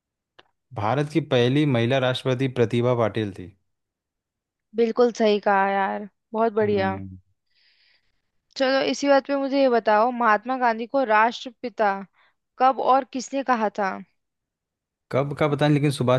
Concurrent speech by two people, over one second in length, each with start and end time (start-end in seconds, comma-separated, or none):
none